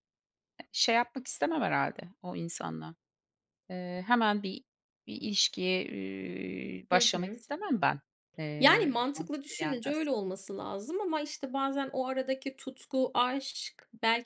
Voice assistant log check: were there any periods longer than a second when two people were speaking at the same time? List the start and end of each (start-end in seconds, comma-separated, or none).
8.6-10.1